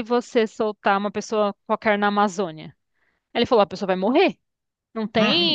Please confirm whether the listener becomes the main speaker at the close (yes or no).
yes